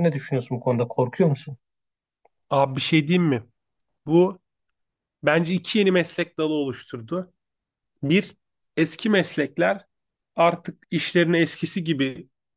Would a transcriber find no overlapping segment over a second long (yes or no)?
yes